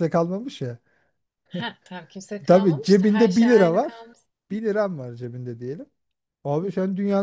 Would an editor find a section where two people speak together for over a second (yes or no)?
yes